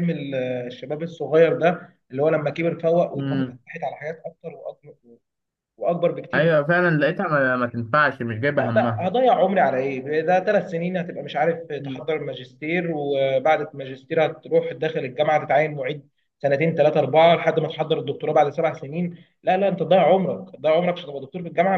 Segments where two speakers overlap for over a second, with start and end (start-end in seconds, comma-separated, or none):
none